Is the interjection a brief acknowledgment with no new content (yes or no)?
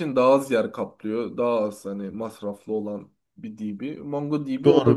no